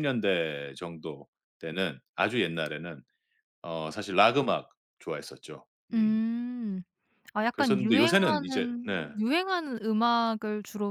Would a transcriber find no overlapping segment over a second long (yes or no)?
no